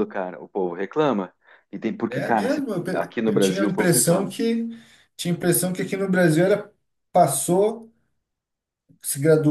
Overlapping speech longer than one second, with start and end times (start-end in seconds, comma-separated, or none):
2.1-4.3